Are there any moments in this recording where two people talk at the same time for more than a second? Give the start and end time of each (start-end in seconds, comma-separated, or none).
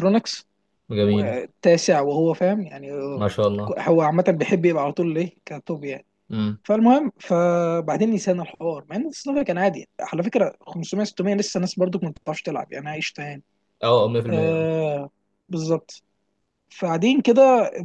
none